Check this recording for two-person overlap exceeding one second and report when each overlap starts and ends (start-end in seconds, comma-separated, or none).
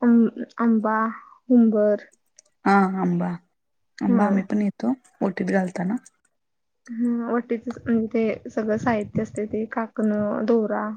none